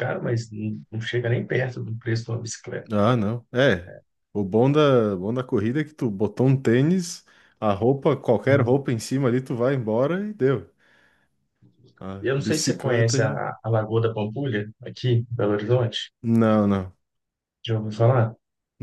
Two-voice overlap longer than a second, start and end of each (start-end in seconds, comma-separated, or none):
12.2-13.4